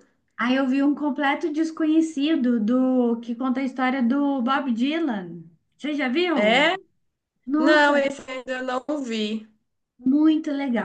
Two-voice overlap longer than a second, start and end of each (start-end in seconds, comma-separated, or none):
none